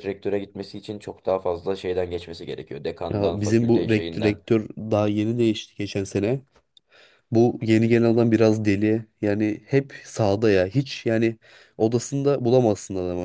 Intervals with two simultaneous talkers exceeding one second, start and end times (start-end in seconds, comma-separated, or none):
3.1-4.4